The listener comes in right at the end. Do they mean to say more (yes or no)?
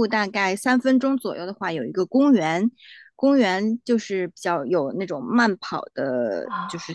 no